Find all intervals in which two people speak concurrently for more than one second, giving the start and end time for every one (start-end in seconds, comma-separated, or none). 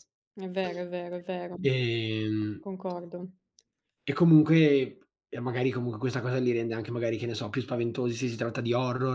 none